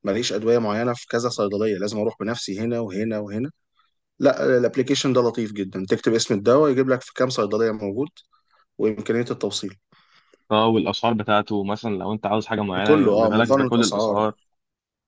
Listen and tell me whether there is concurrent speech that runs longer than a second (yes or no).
yes